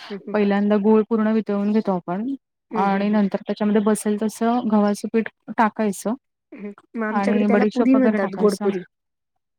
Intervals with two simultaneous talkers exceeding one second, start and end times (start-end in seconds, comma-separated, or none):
7.2-8.7